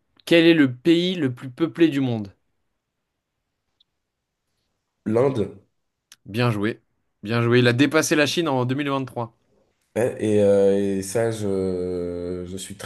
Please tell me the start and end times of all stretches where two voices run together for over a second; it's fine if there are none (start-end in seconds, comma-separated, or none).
none